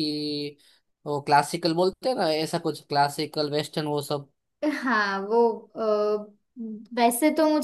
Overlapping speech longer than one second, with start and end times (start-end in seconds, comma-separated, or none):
none